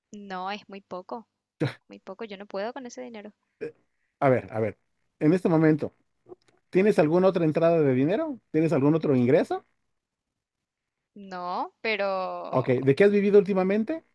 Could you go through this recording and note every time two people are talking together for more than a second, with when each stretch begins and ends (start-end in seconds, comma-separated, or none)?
none